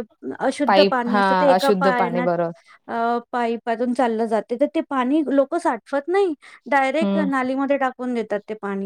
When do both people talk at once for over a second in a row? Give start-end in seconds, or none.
0.7-2.3